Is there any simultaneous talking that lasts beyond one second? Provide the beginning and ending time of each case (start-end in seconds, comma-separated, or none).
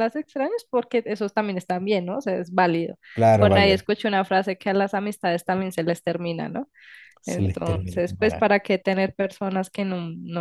7.2-8.5